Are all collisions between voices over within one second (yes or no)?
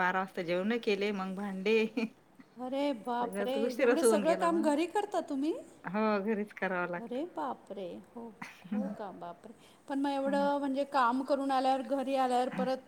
yes